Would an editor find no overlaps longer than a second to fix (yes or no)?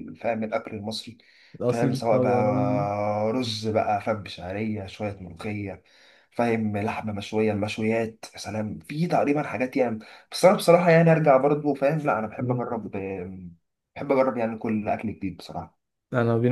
no